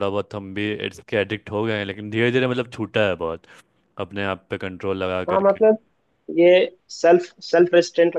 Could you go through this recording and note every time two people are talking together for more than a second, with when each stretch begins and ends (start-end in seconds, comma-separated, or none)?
none